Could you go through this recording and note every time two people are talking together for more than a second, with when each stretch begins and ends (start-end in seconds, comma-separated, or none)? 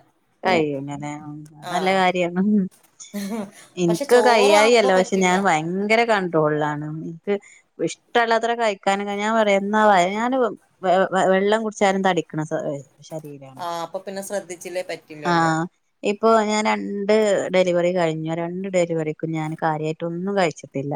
3.9-5.3